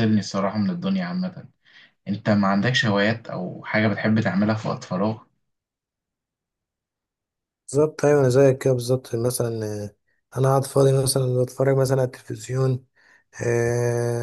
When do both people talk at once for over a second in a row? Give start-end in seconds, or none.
none